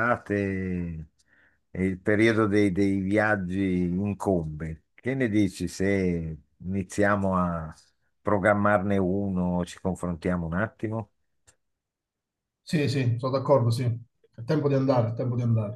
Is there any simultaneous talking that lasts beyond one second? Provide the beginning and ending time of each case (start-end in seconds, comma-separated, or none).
none